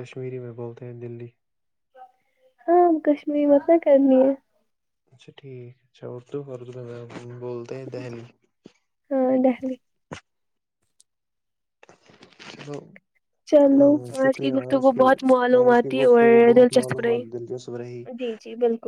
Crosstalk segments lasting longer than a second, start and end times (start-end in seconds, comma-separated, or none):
15.6-17.2